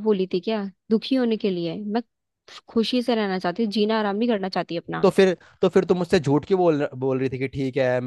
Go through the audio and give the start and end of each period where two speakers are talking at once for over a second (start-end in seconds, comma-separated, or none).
none